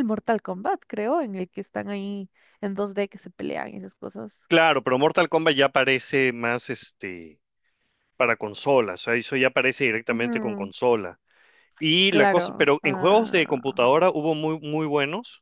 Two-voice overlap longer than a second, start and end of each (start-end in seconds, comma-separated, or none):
12.1-13.8